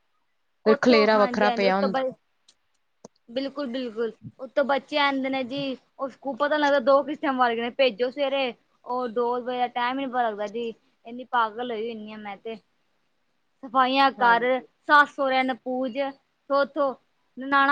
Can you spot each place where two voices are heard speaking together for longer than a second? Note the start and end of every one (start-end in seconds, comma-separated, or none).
0.7-2.0